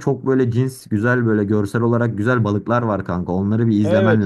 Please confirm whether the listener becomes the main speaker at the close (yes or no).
yes